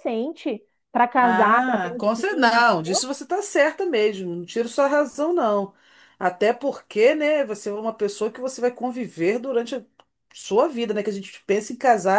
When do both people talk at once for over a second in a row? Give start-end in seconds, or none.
1.2-3.1